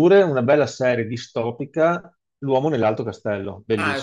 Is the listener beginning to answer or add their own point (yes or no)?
yes